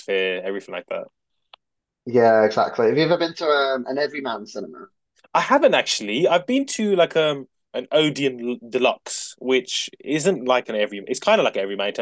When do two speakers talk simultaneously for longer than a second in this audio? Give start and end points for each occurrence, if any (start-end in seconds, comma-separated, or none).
none